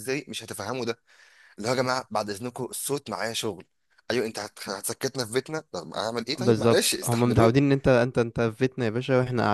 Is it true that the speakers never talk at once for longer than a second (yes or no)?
no